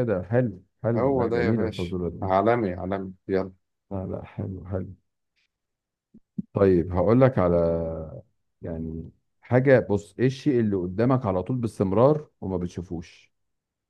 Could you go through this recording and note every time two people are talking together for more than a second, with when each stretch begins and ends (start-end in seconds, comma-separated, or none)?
0.9-2.3